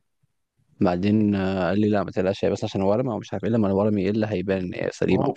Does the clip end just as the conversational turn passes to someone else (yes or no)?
yes